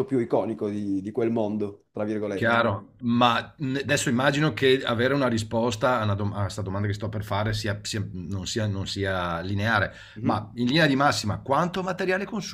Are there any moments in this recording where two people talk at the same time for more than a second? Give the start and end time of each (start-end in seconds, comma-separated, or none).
none